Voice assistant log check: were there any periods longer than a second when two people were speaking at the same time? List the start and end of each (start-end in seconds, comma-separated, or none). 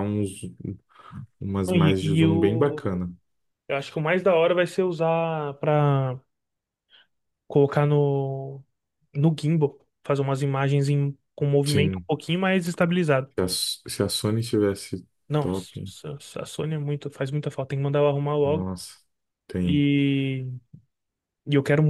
1.7-3.0